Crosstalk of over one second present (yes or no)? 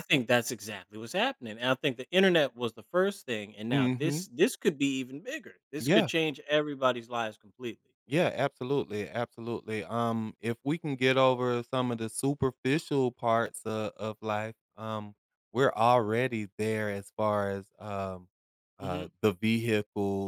no